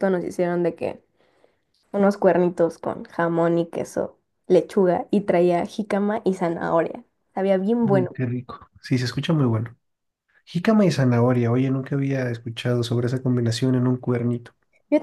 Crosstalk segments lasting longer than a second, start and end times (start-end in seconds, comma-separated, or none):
none